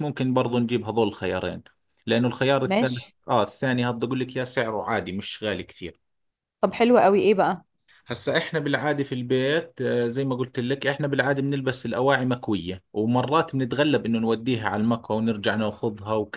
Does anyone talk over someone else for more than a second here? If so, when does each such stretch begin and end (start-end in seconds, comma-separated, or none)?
none